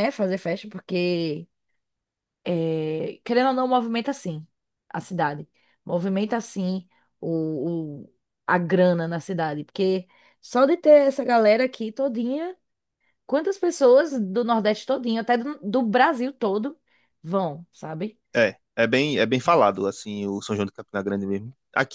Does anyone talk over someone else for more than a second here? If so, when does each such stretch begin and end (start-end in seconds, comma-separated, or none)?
none